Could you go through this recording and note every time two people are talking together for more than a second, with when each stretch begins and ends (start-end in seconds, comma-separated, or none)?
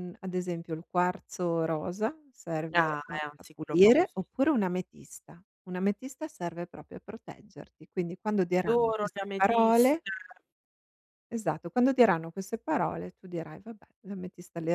2.7-4.2, 8.6-10.1